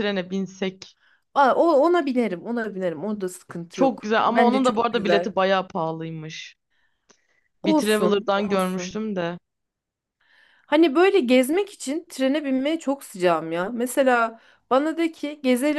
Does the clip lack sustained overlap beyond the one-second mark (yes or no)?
no